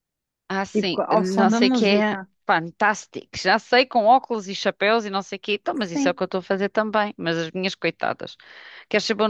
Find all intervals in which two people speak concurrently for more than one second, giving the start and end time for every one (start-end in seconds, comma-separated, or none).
0.7-2.3